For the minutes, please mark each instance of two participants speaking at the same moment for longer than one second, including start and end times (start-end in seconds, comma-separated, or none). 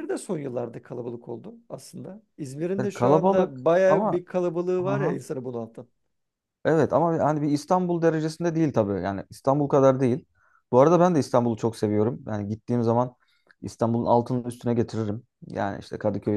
2.8-4.2